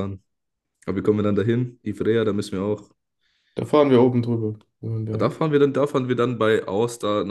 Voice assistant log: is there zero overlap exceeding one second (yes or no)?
yes